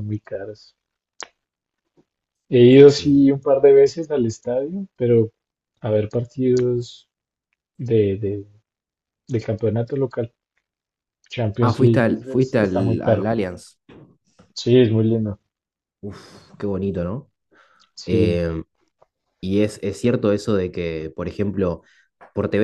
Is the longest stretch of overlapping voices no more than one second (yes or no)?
no